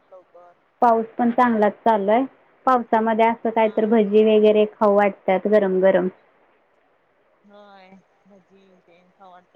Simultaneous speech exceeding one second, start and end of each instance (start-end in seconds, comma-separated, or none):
none